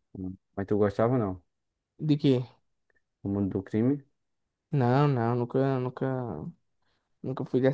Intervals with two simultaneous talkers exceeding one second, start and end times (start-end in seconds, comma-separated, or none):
none